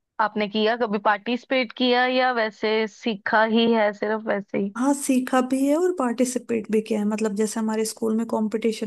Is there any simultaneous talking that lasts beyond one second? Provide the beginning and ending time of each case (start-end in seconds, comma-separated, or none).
none